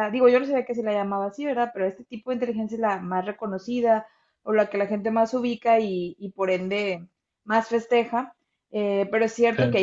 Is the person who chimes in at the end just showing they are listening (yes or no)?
yes